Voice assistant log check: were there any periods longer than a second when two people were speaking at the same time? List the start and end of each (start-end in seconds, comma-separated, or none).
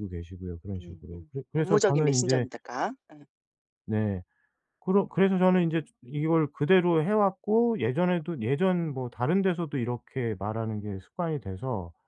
0.8-2.5